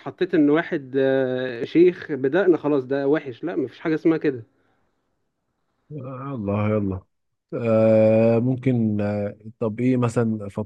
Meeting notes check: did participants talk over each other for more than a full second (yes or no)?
no